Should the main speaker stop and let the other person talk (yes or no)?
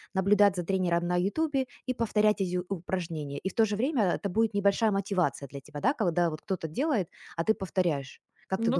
yes